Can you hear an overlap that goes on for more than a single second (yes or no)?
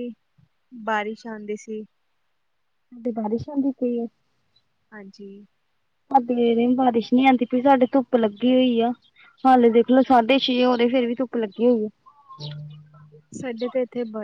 no